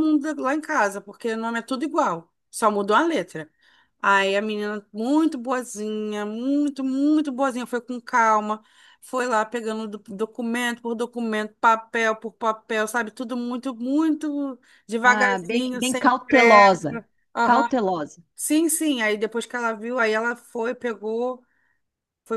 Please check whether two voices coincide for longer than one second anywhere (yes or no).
yes